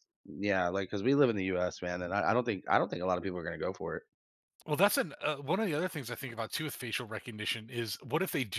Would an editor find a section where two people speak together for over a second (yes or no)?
no